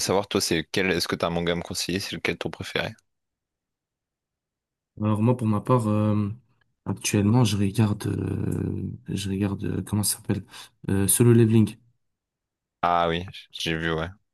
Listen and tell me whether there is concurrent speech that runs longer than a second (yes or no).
no